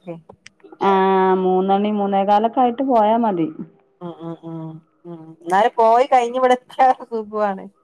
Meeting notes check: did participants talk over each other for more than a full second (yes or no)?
no